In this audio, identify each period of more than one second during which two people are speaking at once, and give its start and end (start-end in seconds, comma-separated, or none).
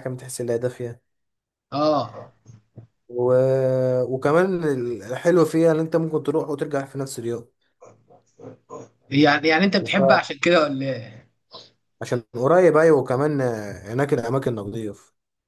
none